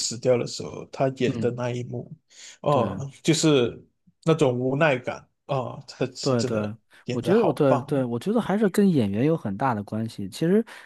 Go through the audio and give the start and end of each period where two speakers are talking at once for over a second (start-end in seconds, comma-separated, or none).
6.2-8.0